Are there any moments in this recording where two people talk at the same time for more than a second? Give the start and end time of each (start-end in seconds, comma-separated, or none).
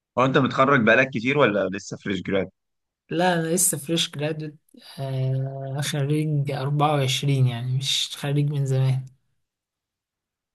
none